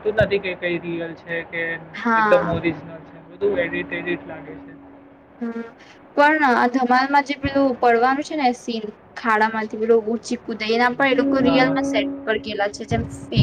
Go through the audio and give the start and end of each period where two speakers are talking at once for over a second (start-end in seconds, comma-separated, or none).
none